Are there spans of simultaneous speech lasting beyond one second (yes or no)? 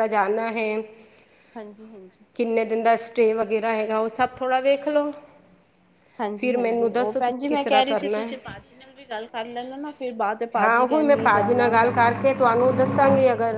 yes